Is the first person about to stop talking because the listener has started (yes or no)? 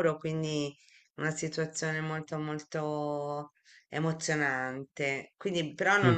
no